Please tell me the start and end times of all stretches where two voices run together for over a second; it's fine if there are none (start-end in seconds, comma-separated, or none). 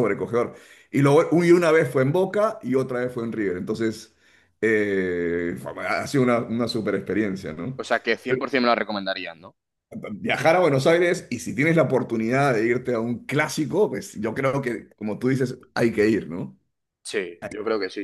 none